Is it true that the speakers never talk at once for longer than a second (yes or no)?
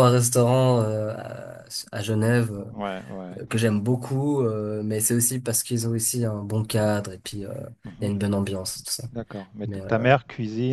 yes